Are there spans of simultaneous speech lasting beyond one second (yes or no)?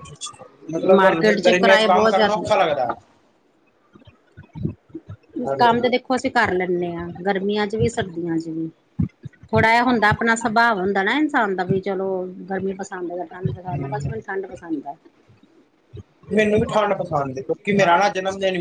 yes